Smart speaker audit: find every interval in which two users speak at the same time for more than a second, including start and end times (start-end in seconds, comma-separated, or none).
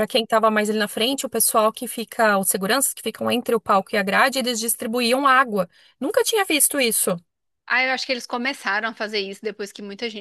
none